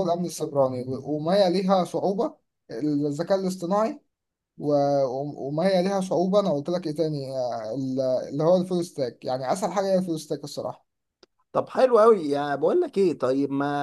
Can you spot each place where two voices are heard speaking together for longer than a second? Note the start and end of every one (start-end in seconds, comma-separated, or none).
none